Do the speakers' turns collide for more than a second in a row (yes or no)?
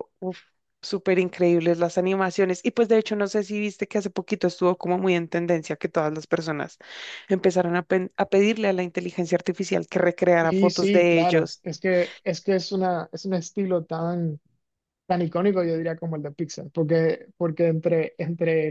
yes